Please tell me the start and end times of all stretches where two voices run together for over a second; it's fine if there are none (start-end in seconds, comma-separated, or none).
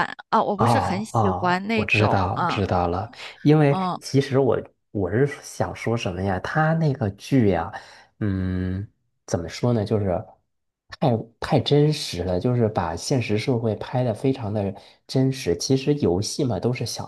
0.6-2.6